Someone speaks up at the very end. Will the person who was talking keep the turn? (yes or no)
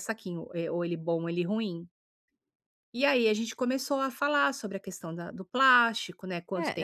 no